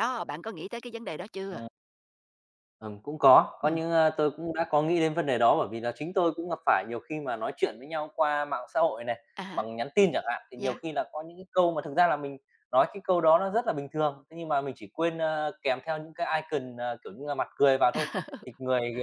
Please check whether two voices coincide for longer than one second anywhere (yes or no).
no